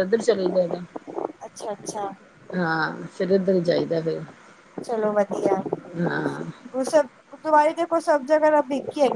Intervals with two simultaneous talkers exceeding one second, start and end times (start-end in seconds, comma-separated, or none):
none